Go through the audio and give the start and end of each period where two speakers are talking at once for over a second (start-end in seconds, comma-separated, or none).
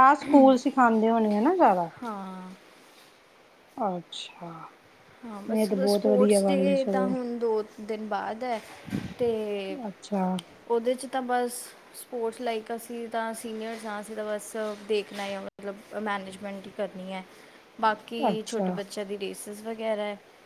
5.5-7.1